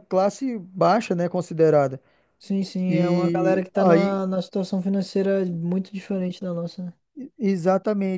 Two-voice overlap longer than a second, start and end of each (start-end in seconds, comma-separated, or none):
2.9-4.2